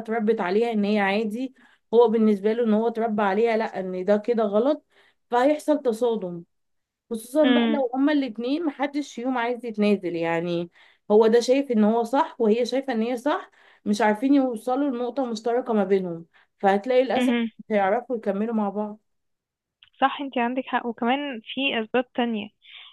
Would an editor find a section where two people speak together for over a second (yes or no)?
no